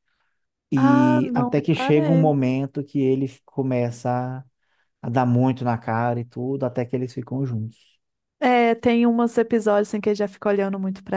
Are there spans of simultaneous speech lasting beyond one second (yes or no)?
yes